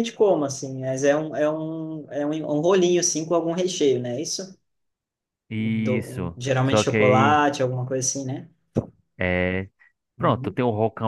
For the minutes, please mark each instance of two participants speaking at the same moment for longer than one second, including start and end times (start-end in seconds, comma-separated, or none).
5.6-7.5